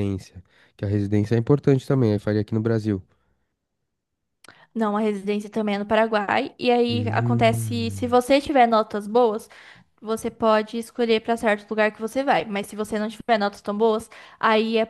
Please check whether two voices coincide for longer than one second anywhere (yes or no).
yes